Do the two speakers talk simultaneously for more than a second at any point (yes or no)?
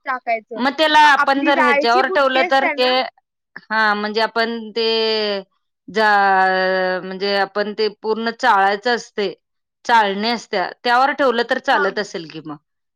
yes